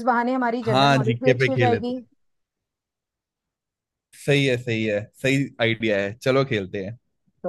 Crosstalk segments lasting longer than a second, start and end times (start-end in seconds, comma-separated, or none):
0.6-2.0